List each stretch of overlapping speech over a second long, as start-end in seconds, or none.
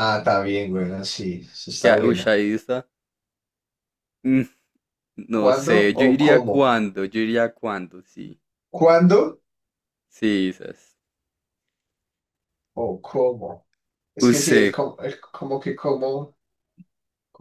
5.3-6.7